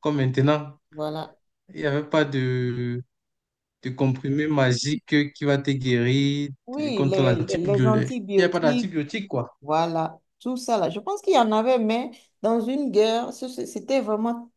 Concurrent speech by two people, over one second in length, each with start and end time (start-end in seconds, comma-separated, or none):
6.7-8.9